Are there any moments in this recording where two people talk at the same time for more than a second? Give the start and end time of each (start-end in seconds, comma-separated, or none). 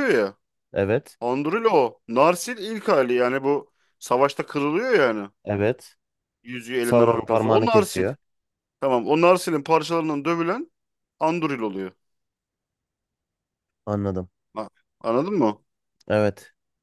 6.8-8.1